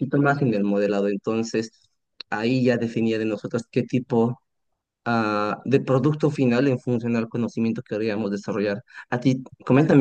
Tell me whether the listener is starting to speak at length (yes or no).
no